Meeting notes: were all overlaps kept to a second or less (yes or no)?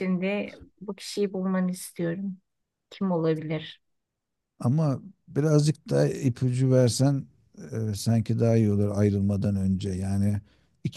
yes